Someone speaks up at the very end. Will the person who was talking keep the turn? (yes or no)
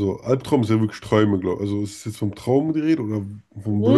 no